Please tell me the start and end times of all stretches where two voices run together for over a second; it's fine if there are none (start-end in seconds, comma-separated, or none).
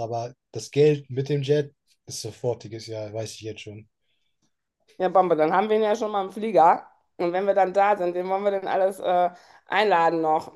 none